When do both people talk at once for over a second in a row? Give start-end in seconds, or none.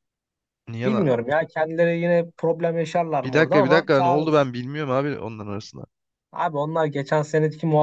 3.2-4.5